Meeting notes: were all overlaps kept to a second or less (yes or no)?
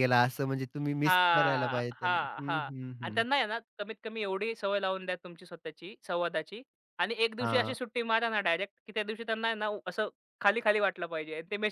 no